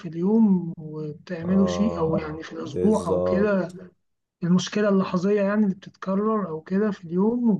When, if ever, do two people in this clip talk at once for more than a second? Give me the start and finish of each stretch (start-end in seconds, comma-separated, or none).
1.4-3.6